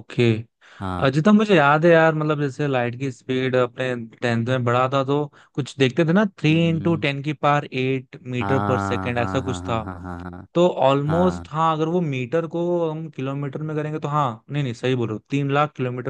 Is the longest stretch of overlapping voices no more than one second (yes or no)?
no